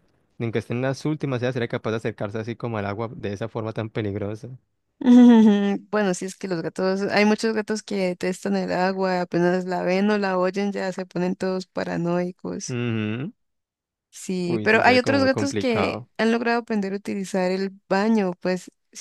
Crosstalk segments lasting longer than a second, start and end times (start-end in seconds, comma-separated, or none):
14.4-16.1